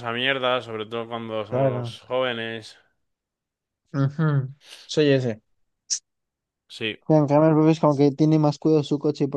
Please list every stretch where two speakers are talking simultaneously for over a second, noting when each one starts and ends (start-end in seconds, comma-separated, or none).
none